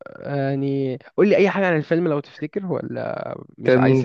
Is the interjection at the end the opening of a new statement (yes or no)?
yes